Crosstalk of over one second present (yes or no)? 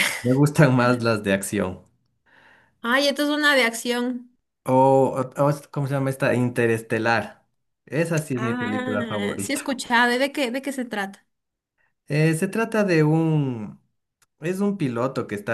yes